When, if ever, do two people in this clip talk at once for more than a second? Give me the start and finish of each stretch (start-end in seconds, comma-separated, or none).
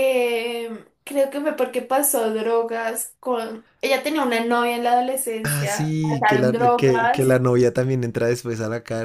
5.4-7.4